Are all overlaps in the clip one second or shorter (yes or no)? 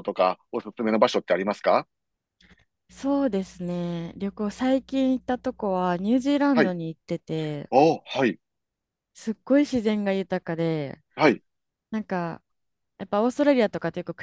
yes